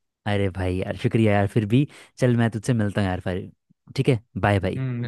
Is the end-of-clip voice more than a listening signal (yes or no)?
yes